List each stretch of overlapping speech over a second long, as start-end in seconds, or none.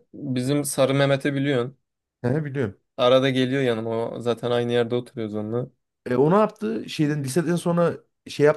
none